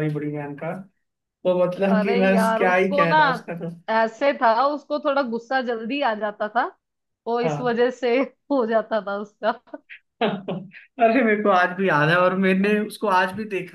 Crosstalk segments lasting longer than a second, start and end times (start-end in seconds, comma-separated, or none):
1.9-3.2